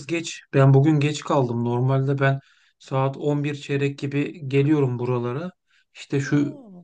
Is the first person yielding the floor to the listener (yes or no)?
no